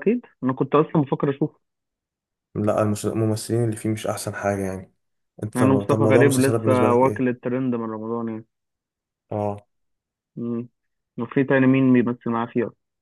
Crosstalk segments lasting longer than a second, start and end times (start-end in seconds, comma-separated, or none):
5.5-7.3